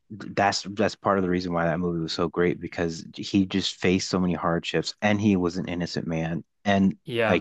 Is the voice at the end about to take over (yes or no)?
no